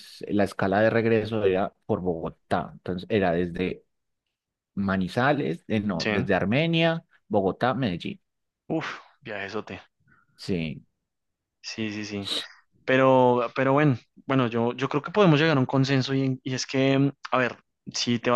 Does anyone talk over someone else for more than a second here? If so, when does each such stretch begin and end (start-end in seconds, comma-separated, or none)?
none